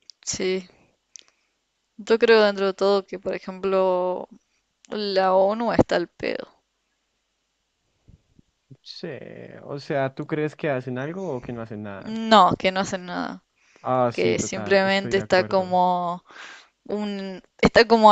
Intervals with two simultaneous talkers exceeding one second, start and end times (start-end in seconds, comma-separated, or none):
14.1-15.7